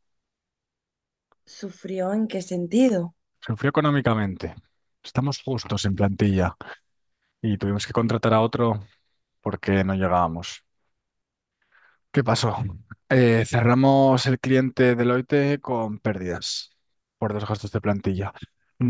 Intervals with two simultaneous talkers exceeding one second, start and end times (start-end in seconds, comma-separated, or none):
none